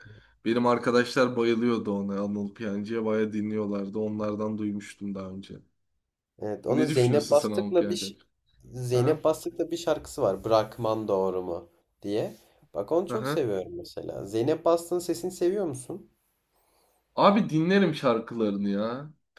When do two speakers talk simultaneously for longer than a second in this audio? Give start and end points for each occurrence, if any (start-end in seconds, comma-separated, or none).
6.7-8.1